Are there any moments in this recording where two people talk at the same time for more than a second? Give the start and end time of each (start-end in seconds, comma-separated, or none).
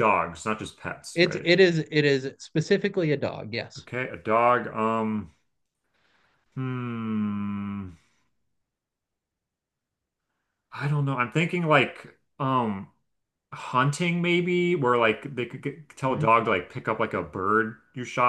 none